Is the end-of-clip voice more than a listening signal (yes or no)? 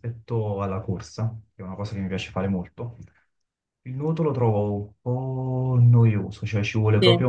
no